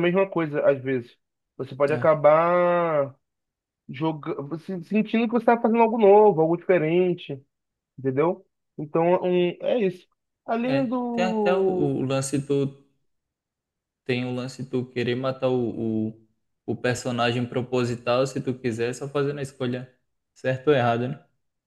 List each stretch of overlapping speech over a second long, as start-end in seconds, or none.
10.7-12.0